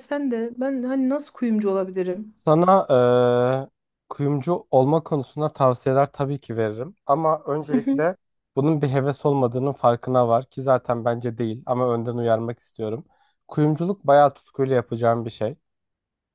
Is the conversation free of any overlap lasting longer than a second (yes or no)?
yes